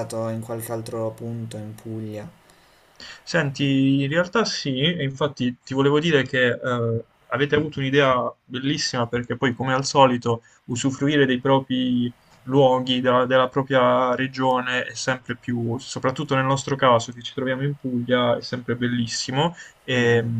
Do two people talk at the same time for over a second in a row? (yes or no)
no